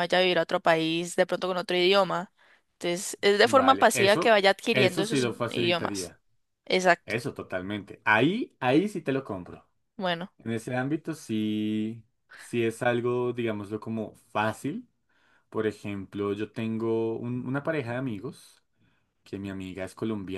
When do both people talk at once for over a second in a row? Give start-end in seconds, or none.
3.4-6.1